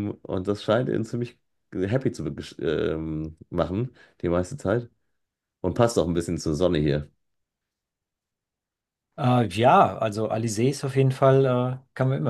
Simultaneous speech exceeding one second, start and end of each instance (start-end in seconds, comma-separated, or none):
none